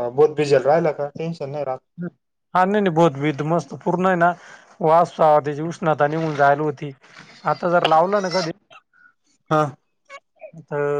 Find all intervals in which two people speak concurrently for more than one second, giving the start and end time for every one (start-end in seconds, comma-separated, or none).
none